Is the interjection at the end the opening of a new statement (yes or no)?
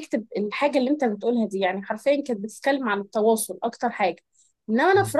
no